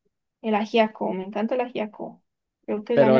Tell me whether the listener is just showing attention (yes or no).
no